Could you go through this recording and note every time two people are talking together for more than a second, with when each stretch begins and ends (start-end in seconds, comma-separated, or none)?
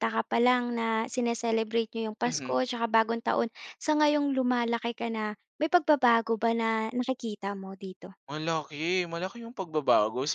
none